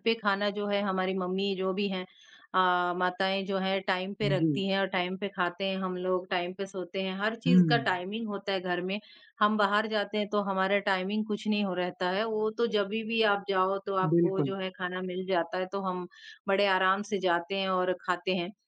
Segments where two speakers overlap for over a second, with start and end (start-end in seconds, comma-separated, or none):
none